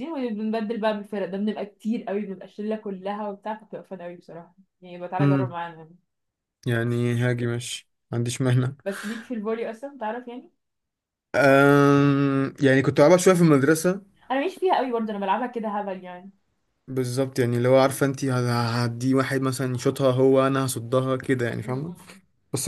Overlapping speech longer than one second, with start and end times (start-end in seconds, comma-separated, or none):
none